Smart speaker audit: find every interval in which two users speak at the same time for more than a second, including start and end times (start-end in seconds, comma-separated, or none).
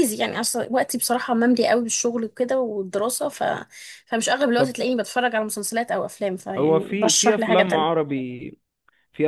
6.6-8.1